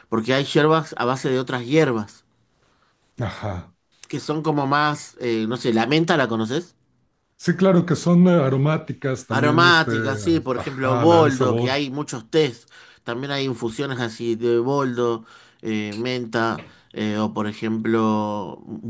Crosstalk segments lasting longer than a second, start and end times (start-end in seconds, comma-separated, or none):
10.5-11.8